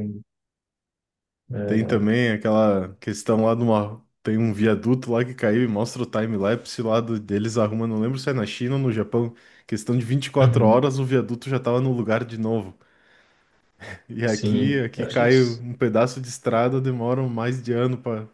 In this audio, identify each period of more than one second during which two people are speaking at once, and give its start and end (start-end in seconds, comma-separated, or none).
14.3-15.6